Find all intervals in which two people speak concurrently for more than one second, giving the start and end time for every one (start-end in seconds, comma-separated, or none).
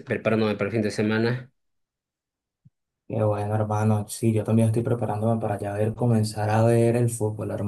none